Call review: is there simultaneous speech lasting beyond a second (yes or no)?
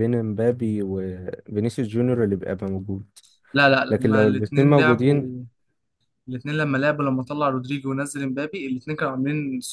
yes